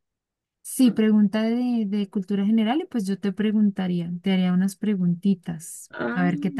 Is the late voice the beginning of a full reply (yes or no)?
yes